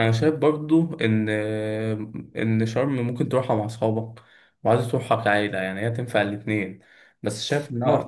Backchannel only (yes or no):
yes